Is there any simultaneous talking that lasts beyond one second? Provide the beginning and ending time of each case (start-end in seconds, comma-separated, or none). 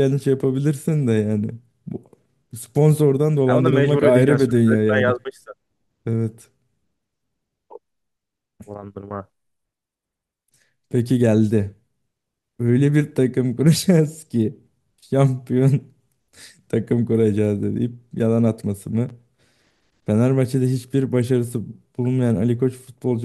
3.5-5.2